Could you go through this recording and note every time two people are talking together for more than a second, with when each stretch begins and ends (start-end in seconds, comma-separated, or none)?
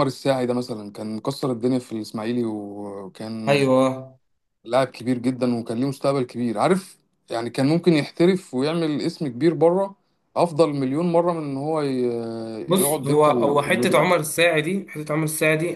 12.8-14.2